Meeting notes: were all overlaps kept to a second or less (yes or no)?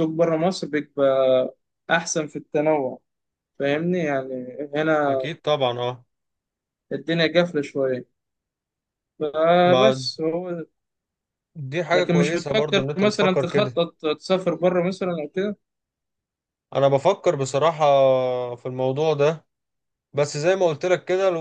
no